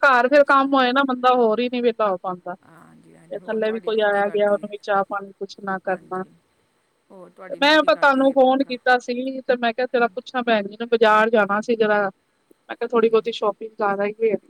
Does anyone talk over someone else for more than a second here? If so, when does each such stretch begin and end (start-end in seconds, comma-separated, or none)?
3.3-4.7, 7.1-8.7